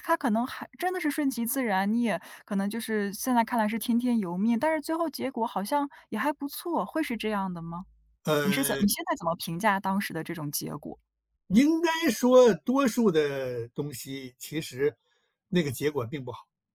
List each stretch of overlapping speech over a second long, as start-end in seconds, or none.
none